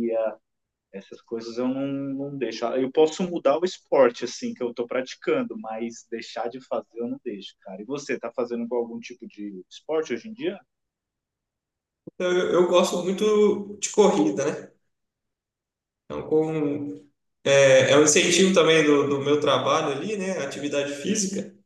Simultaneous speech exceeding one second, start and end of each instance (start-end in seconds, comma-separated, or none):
none